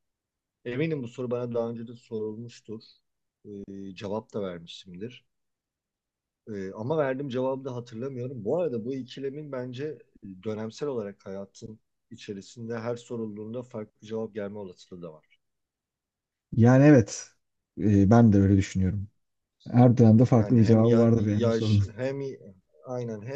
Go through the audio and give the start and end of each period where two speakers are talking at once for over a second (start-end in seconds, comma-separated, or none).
20.4-21.8